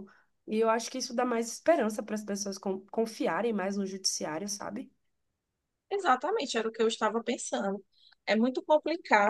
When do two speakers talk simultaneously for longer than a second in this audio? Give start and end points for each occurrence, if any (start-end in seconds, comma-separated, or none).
none